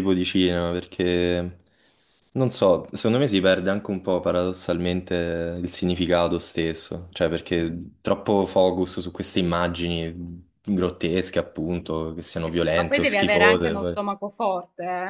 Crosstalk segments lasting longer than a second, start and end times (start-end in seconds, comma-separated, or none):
12.4-14.0